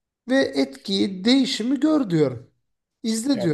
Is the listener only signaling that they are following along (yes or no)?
no